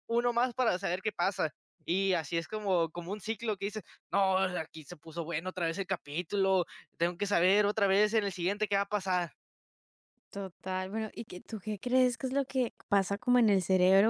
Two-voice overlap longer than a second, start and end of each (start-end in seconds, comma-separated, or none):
none